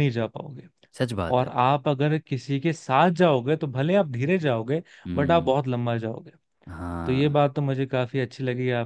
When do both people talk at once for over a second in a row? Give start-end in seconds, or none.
none